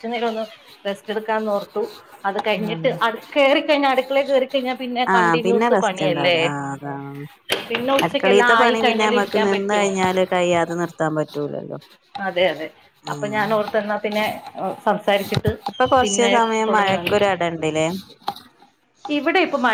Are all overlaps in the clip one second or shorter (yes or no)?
no